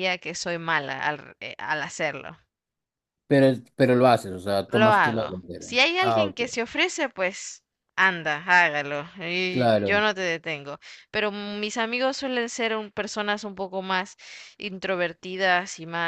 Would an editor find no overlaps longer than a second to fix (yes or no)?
no